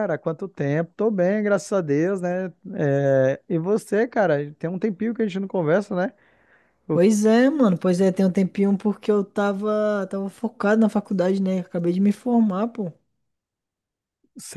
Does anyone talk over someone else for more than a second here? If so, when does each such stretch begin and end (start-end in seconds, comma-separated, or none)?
none